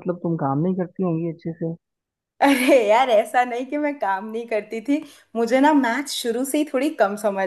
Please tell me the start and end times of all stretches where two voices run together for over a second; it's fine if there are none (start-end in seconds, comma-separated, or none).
none